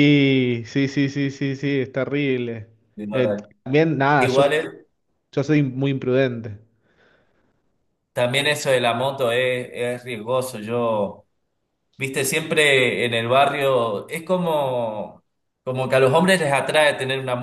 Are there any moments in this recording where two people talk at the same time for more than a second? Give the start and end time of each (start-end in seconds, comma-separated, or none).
none